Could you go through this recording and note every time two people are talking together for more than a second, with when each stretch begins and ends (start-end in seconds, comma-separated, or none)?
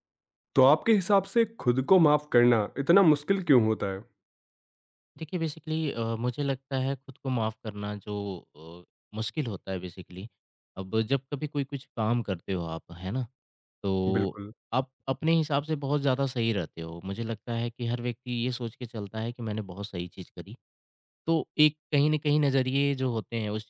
none